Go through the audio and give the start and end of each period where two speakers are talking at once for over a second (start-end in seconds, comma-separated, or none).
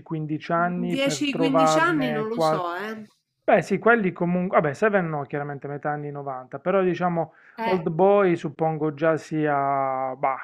0.9-2.6